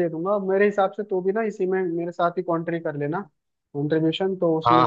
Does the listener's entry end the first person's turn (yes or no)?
yes